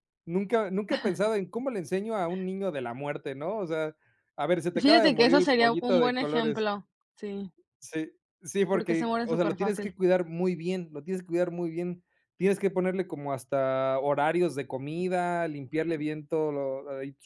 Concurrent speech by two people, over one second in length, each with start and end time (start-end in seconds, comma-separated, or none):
4.7-6.7, 8.7-9.9